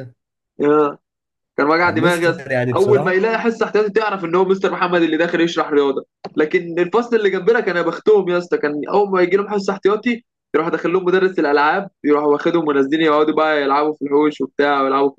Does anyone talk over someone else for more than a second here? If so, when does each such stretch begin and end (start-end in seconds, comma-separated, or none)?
1.8-3.2